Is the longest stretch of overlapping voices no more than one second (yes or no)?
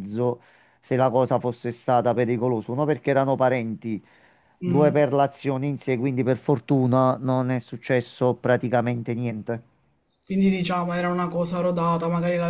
yes